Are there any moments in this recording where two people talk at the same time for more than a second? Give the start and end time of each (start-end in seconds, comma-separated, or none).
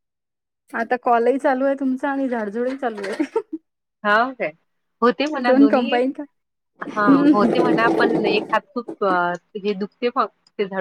none